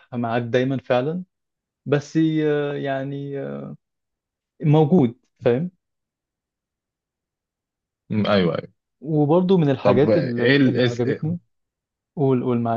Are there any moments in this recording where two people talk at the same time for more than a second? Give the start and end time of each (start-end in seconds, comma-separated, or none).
9.8-11.3